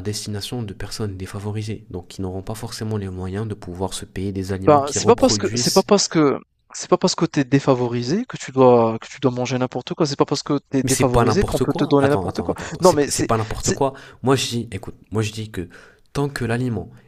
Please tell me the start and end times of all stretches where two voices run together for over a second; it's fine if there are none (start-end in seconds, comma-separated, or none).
4.6-5.9, 10.8-13.8